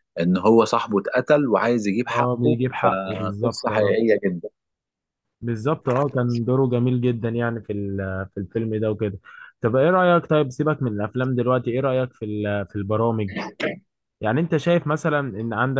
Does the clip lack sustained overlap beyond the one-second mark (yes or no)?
no